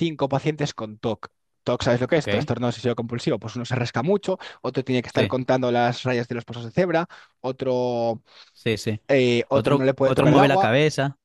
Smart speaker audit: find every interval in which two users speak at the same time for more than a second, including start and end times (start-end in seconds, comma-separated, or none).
9.5-10.7